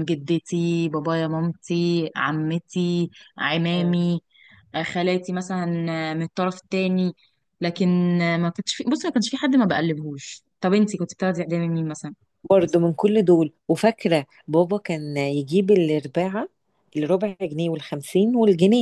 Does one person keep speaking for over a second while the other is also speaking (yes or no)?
no